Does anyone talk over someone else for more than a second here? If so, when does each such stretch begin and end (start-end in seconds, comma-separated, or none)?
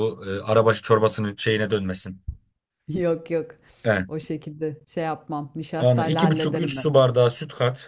5.8-7.1